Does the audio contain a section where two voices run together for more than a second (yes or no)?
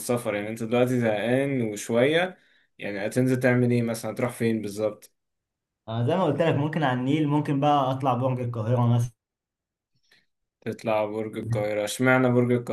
no